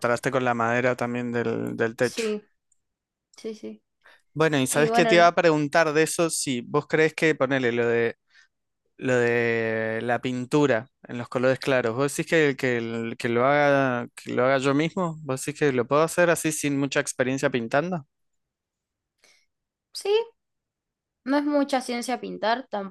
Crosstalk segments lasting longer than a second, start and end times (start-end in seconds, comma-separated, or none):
none